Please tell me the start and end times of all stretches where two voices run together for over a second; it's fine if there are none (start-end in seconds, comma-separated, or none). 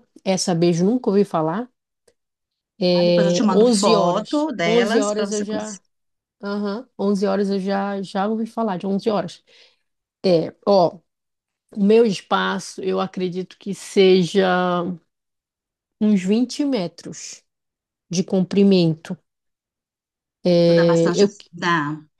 2.9-5.8